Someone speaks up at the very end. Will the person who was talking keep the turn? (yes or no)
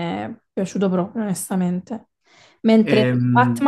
yes